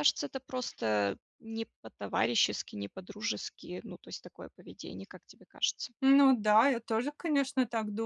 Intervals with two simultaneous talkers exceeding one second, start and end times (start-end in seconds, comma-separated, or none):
none